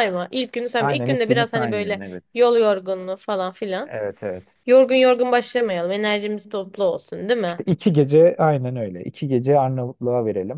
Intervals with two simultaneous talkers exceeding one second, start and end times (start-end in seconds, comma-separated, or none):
0.8-2.2